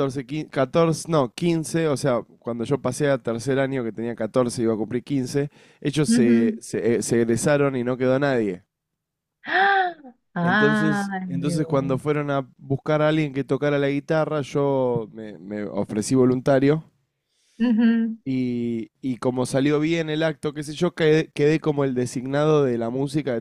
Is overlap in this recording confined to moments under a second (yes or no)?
no